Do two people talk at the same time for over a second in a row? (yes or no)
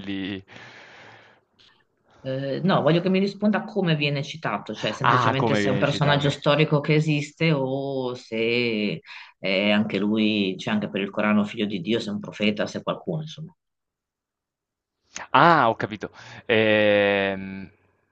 yes